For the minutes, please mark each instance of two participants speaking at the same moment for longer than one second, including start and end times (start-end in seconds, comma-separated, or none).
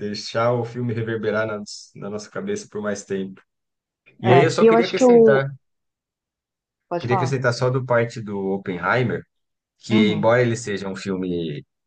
4.2-5.5